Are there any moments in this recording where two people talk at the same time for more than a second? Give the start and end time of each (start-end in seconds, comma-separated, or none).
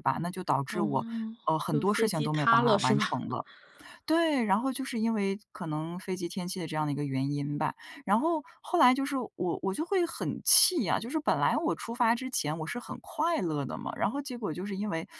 1.7-3.2